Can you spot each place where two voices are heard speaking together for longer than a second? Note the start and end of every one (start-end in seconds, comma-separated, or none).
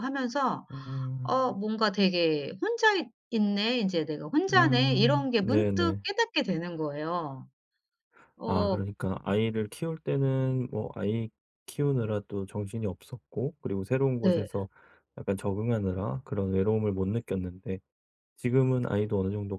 4.5-6.0